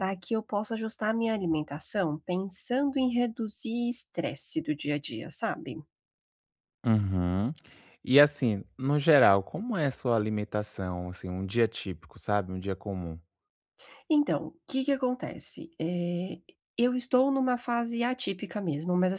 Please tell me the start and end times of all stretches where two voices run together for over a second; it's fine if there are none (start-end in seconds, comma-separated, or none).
none